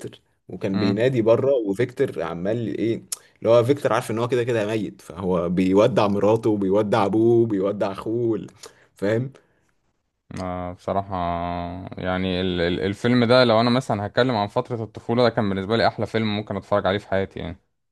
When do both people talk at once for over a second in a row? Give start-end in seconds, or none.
none